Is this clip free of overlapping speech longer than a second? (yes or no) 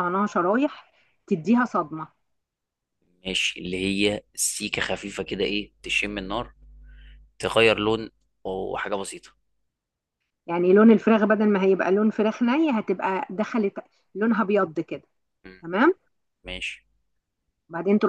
yes